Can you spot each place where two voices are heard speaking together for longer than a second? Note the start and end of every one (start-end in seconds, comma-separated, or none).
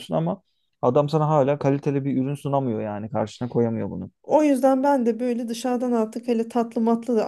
none